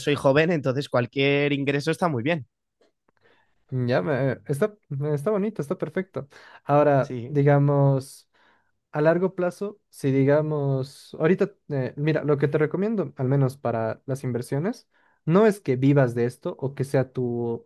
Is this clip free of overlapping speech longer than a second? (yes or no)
yes